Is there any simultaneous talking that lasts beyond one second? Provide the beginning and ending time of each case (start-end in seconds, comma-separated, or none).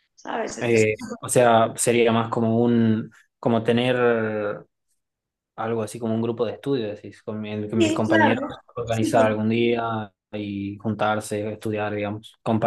7.8-9.3